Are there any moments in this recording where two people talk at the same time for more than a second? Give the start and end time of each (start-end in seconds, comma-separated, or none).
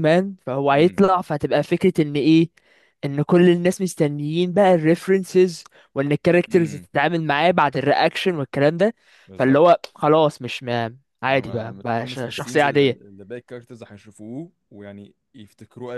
11.3-13.1